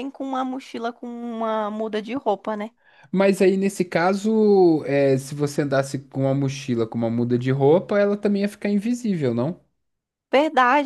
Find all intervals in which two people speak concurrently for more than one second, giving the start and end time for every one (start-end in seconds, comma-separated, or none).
none